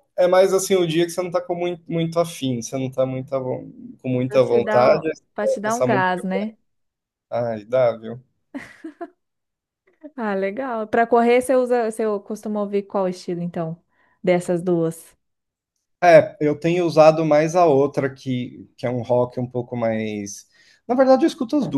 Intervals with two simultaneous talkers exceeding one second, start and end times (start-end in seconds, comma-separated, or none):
4.3-6.2